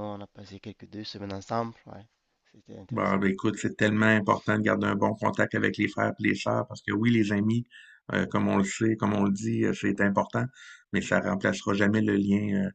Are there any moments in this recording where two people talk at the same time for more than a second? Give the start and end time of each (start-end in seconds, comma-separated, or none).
none